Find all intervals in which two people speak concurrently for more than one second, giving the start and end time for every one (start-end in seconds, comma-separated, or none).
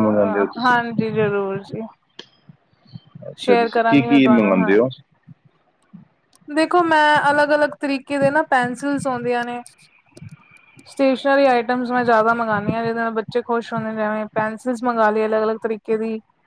3.4-4.8